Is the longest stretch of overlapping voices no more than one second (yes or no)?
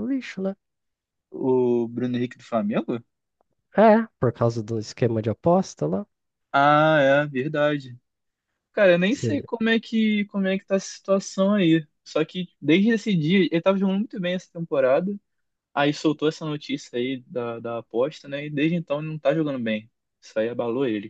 yes